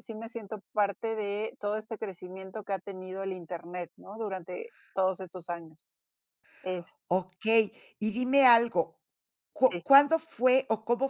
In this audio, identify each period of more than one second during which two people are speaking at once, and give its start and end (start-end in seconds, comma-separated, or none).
none